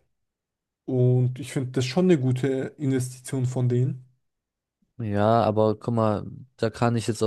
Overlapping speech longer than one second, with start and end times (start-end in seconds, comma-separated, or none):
none